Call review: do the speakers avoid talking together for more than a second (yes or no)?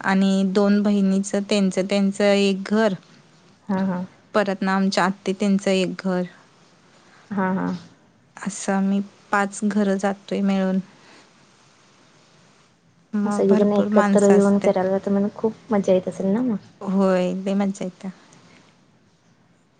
no